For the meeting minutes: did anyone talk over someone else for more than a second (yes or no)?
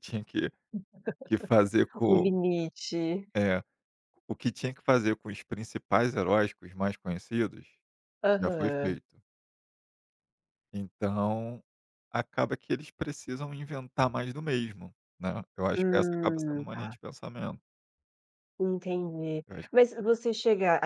yes